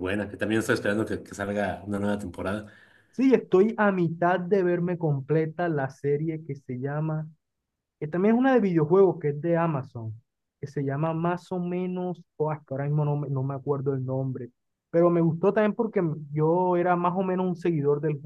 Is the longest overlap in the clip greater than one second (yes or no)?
no